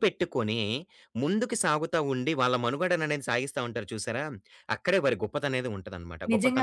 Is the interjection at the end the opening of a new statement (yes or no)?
yes